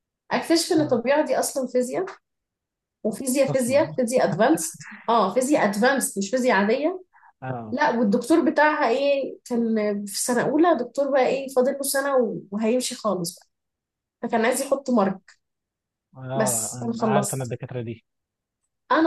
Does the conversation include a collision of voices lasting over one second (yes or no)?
yes